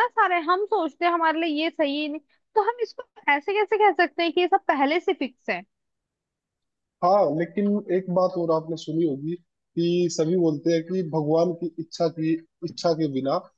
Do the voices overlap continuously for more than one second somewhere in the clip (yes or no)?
no